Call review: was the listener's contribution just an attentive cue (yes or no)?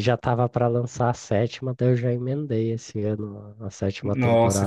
no